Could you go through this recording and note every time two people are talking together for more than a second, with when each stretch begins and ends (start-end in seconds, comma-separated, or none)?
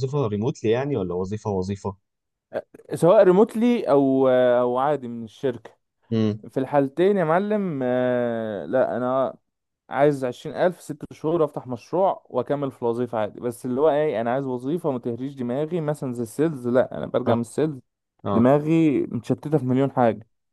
none